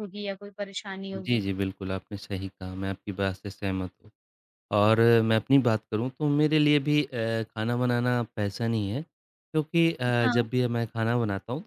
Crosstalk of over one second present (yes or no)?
no